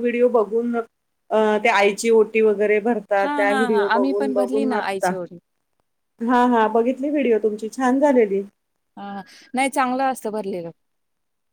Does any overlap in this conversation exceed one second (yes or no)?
yes